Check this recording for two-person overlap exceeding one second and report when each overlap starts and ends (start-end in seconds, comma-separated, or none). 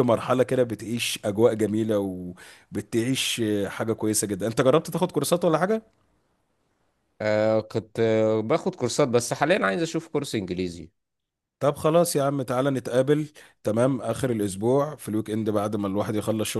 none